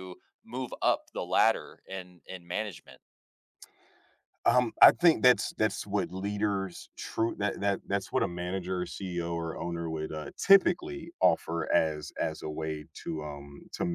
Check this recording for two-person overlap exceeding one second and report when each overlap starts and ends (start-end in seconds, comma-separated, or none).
none